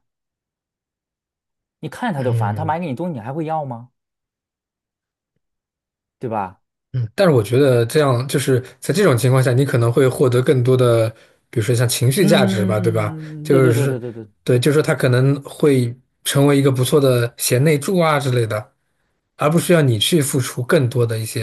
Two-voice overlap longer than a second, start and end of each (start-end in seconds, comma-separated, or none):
12.2-14.0